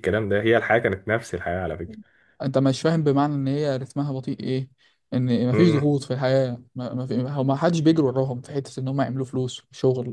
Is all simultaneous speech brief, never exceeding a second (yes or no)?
yes